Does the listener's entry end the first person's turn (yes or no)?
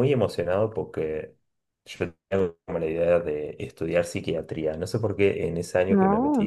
no